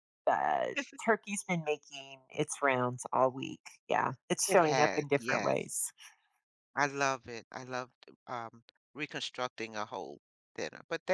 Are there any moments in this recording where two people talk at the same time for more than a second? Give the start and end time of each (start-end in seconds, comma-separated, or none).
4.5-5.7